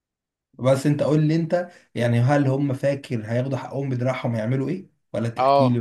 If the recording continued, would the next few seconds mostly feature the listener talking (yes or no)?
yes